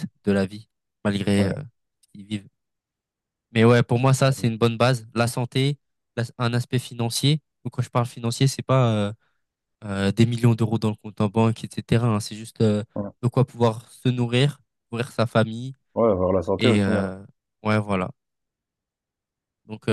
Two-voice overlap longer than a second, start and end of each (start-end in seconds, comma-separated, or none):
none